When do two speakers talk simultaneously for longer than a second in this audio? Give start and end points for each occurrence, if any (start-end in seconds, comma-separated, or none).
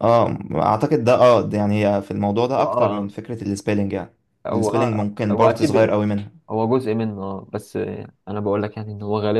4.5-5.8